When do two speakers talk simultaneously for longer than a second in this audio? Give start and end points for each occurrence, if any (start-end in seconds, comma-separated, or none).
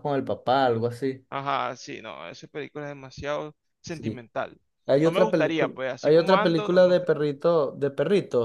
5.0-7.1